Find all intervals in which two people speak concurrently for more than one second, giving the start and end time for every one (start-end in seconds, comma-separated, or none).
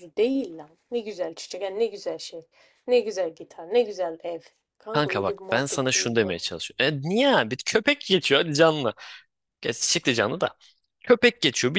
4.9-6.4